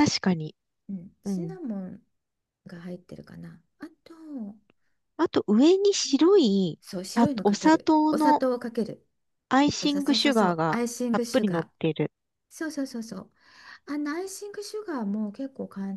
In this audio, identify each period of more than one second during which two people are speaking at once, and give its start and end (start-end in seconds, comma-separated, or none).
6.8-8.4, 9.9-11.7